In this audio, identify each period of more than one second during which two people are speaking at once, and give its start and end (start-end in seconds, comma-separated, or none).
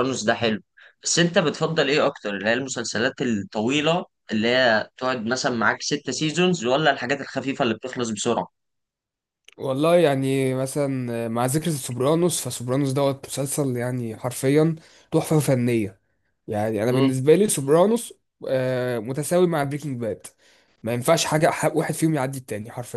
none